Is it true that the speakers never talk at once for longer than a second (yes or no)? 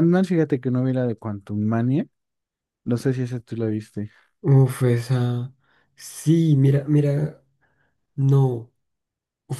yes